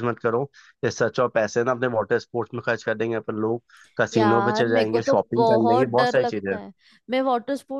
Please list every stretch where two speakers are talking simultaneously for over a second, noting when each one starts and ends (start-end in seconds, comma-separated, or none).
4.1-6.6